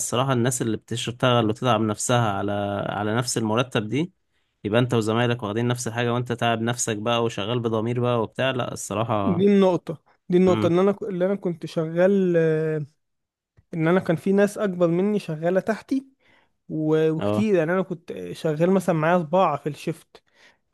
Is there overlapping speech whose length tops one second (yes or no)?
no